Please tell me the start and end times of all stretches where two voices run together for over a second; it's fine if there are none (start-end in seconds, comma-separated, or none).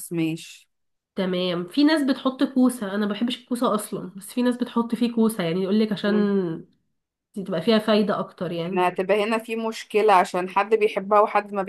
none